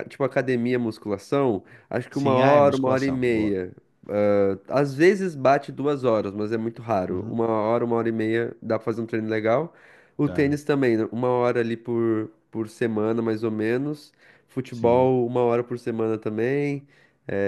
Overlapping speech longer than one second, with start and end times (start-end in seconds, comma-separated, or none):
2.1-3.6